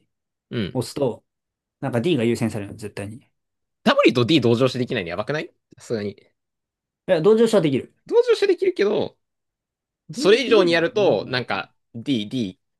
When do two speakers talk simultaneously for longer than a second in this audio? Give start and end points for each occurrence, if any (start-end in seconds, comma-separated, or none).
10.1-11.4